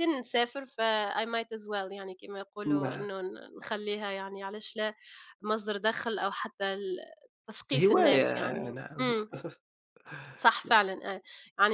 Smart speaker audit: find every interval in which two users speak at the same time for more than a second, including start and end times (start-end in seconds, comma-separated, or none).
7.7-9.1